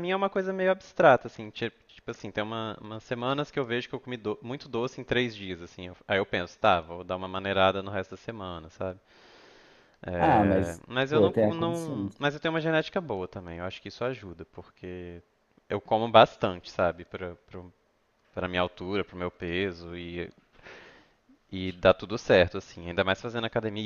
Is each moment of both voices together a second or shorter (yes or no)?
no